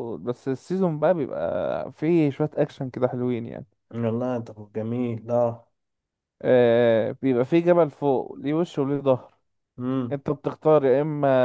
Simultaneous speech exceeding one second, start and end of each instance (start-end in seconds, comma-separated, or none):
none